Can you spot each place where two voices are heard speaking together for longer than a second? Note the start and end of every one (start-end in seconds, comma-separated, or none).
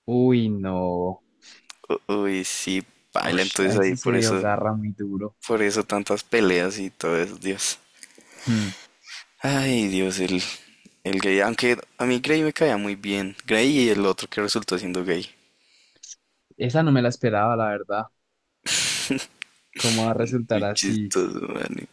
3.2-4.5